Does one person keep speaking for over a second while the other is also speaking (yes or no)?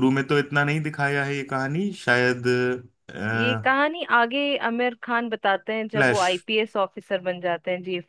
no